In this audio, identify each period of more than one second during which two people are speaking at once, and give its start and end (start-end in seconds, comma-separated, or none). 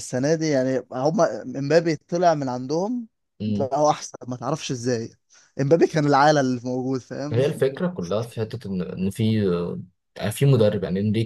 none